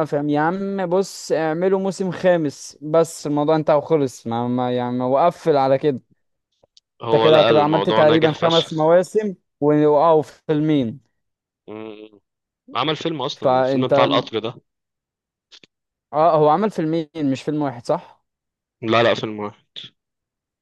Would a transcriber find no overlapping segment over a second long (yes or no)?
no